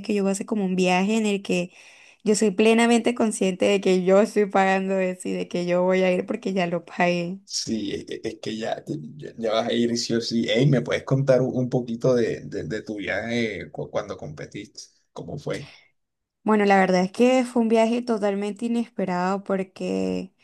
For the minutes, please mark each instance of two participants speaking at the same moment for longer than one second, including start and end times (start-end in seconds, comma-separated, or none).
none